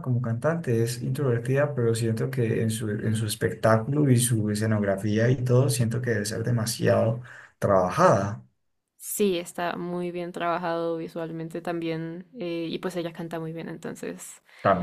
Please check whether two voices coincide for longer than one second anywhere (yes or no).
no